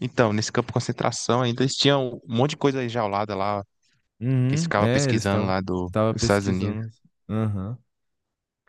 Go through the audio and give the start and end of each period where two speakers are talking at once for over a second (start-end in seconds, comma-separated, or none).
4.5-6.8